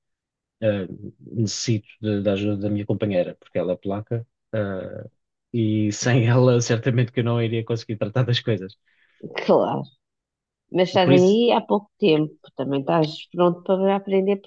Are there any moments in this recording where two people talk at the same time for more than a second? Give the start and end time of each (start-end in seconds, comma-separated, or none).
none